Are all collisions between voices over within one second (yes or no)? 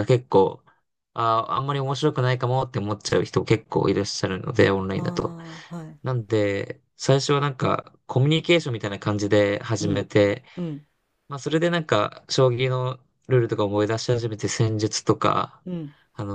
yes